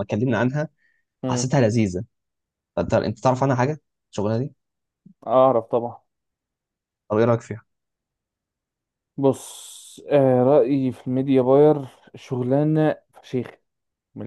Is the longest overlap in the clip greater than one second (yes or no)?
no